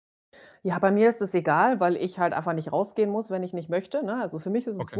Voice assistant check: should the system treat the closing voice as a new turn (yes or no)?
no